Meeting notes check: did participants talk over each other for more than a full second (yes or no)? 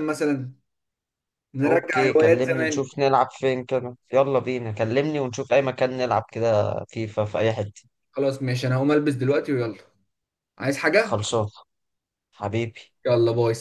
yes